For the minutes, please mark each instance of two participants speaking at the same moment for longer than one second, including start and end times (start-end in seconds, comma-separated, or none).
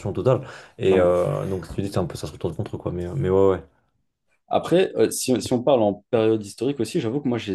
none